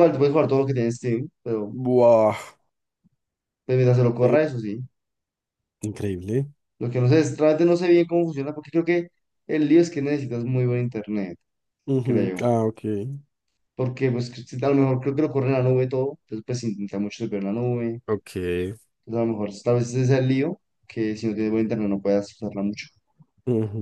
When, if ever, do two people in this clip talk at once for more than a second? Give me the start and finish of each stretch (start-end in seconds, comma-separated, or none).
none